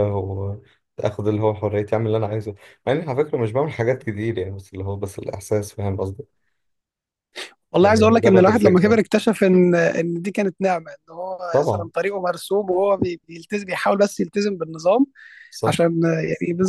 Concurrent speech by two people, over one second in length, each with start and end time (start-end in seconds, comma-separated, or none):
7.8-9.0